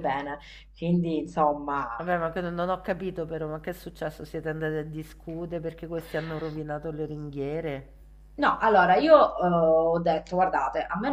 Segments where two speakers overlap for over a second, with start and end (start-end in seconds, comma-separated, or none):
none